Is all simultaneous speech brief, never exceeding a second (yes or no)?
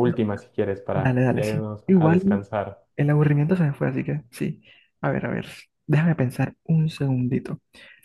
no